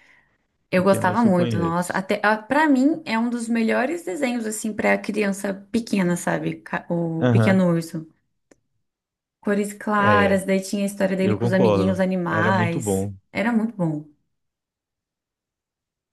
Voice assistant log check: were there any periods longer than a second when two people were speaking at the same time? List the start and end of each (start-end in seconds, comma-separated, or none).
0.7-2.0, 11.2-13.2